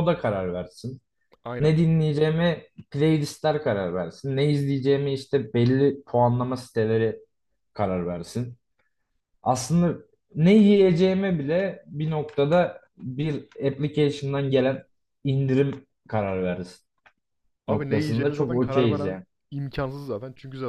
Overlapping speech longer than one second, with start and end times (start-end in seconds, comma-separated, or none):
17.7-19.2